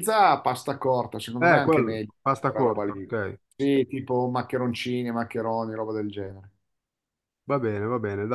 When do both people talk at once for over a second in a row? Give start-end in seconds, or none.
1.4-3.1